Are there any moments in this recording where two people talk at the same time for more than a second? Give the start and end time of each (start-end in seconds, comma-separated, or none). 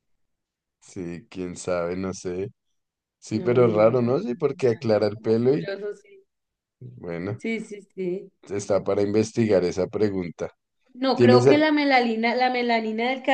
3.3-5.7